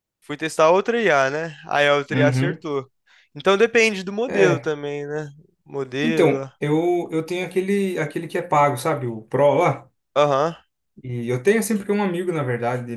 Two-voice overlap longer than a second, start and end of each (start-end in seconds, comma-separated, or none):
none